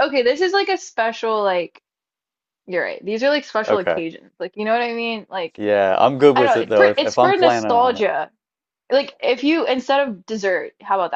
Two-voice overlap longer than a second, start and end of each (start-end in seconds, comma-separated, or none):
6.3-8.0